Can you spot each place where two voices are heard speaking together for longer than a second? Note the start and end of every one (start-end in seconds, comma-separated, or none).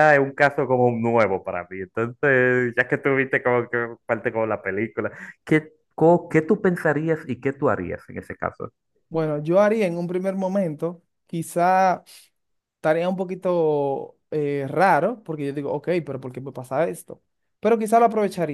none